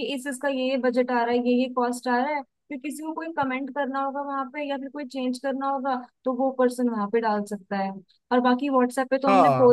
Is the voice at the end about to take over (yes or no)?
no